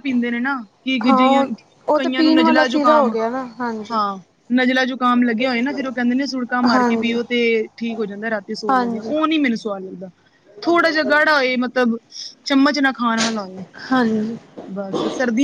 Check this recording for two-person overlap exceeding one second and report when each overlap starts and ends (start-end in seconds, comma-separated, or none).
1.9-3.1